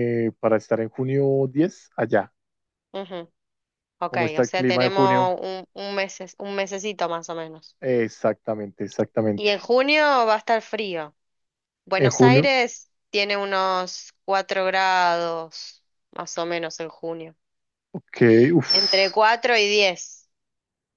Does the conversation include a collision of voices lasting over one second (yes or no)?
yes